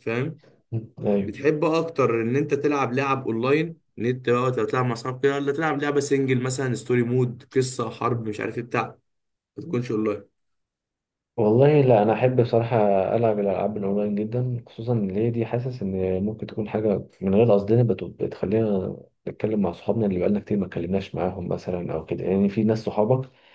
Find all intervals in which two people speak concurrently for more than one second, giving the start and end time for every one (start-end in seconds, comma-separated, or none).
none